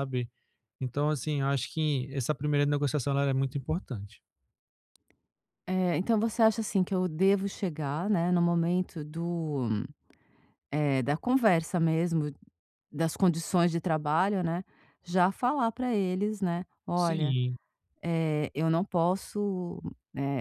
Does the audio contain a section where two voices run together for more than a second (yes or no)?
no